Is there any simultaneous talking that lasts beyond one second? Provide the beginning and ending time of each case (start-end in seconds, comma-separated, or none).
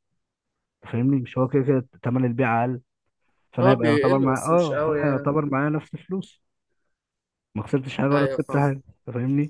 3.6-5.3